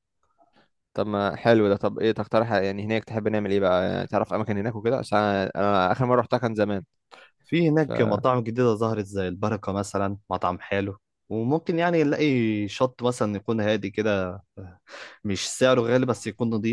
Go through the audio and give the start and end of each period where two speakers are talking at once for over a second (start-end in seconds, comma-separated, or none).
none